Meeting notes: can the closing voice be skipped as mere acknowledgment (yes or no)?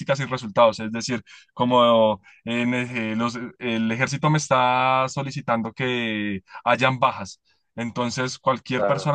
yes